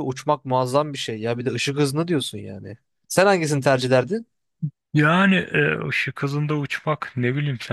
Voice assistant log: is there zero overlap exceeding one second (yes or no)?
yes